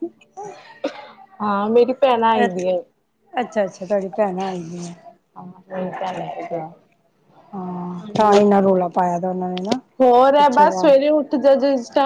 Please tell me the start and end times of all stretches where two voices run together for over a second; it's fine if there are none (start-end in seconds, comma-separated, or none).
none